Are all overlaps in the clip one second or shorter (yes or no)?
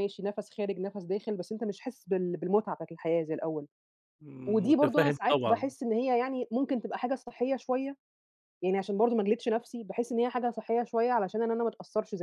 no